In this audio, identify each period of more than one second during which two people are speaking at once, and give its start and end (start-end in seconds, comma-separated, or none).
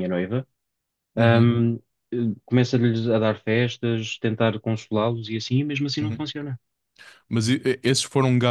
none